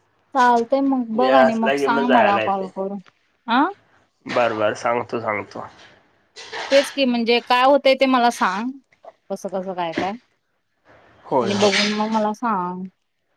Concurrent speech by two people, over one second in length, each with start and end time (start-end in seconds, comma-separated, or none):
1.1-2.7